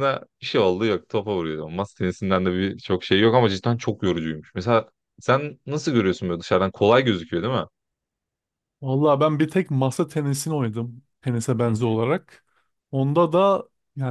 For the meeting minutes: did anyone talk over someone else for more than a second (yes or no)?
no